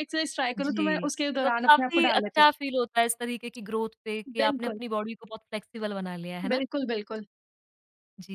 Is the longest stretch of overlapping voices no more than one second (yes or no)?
no